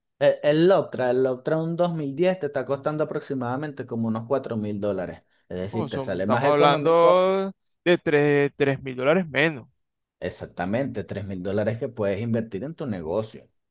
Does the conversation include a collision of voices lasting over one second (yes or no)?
yes